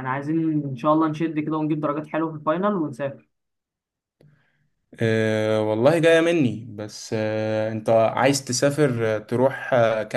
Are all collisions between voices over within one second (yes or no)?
yes